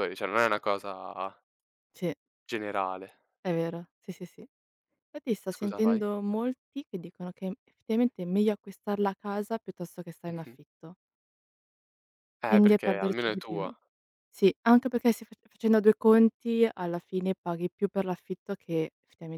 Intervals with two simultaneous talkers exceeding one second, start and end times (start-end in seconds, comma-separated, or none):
12.5-13.7